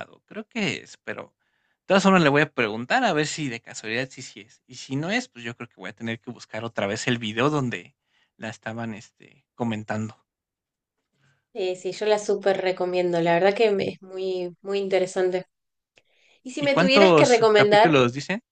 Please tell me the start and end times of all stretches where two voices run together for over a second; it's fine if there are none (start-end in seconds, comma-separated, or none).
16.6-17.9